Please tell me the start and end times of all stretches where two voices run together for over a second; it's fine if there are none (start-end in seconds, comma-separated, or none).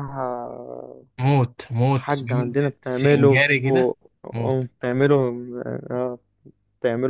1.9-3.4